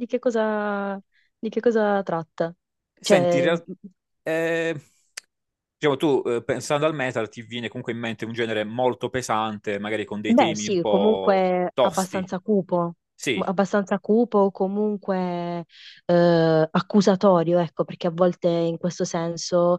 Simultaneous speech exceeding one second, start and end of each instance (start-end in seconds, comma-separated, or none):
10.3-12.3